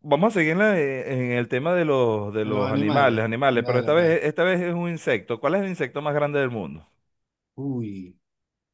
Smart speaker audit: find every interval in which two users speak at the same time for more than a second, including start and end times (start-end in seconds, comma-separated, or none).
2.4-4.2